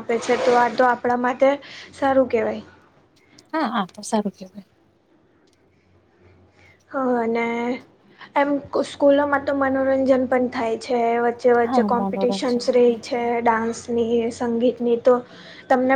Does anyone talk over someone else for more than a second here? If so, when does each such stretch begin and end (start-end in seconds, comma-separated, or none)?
11.7-13.0